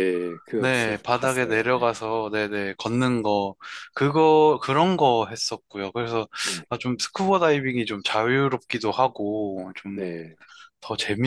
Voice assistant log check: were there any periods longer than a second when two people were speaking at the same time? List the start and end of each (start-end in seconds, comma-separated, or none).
0.6-1.9